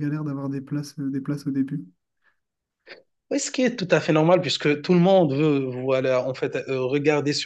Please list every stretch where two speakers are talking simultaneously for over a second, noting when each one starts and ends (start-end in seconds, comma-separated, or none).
none